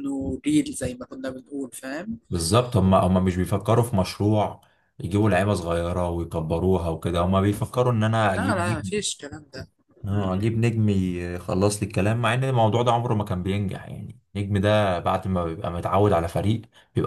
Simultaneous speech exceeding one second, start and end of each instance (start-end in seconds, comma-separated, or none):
none